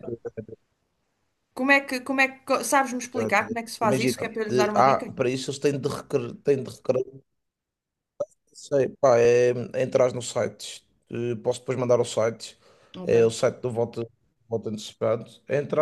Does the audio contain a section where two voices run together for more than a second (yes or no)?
yes